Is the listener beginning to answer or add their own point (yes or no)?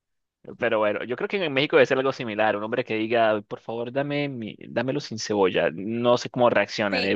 yes